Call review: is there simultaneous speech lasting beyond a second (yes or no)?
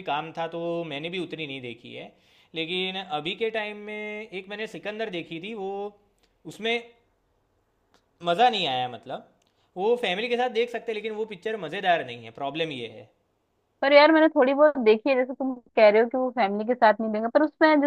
no